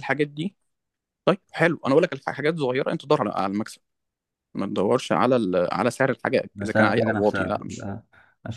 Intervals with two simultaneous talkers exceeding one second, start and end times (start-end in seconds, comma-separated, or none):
6.5-7.9